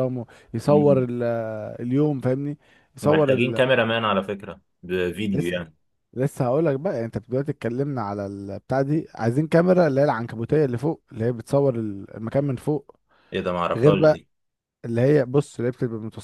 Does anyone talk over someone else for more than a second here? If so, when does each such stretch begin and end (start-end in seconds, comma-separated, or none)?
none